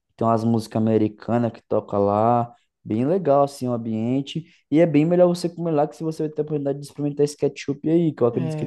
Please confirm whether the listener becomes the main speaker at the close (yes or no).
yes